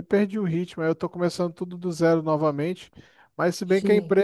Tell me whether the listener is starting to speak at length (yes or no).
no